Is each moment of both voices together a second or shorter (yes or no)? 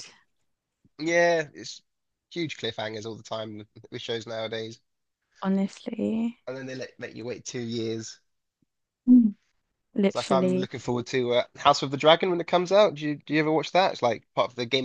yes